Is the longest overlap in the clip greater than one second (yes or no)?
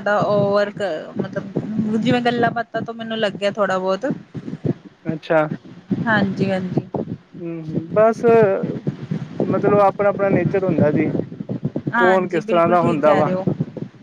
yes